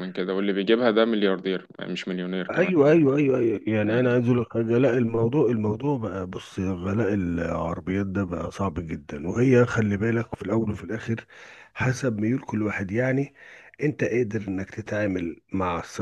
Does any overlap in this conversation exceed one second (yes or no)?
no